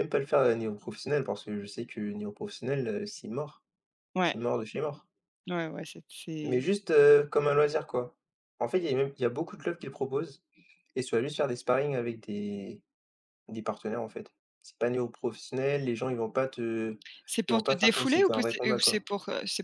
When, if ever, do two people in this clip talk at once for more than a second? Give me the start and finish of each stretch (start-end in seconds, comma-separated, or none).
17.5-19.0